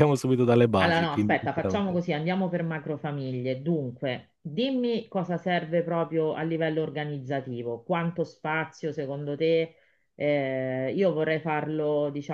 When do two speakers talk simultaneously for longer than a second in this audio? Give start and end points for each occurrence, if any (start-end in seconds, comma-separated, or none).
0.8-2.0